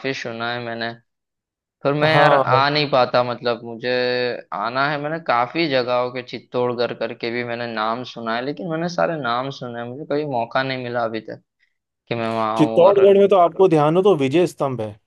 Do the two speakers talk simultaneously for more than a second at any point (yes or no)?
no